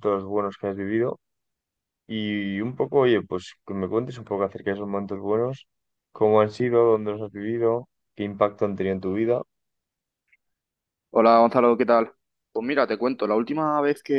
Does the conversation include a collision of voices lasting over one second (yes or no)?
no